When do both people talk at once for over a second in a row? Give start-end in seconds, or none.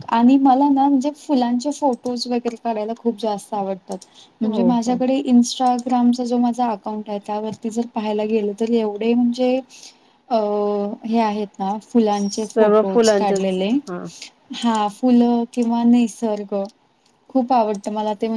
12.1-13.7